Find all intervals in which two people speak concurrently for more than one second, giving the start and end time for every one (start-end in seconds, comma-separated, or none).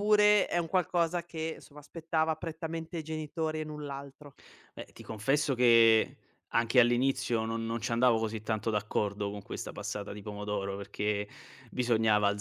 none